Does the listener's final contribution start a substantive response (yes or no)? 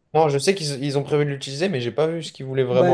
yes